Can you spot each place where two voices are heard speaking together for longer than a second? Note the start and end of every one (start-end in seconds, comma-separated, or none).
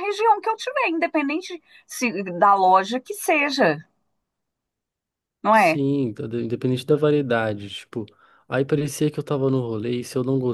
none